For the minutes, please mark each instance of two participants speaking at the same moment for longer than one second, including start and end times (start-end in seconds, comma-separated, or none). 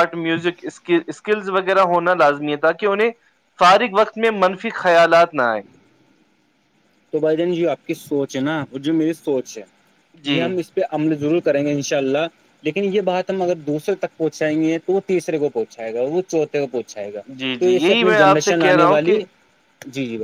17.6-19.2